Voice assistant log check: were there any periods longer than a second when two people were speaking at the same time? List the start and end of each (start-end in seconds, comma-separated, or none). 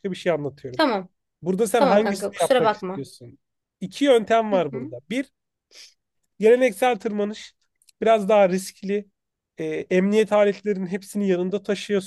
1.7-3.0